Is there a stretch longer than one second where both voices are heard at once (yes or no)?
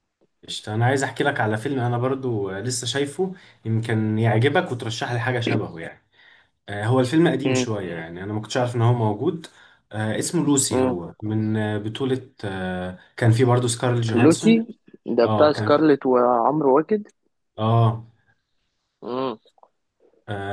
no